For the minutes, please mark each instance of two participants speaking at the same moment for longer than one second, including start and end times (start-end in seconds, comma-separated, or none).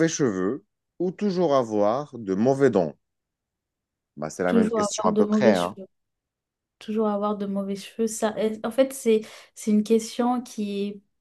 4.5-5.8